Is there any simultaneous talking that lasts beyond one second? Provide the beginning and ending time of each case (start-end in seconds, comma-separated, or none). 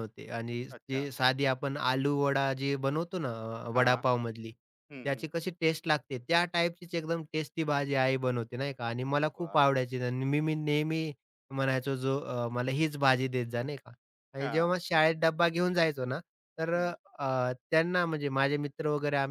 none